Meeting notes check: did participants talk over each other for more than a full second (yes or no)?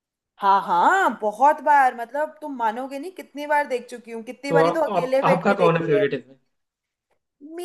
yes